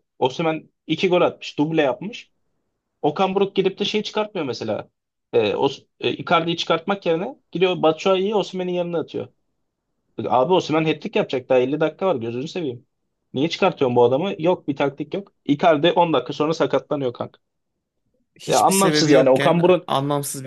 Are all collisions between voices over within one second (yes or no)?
no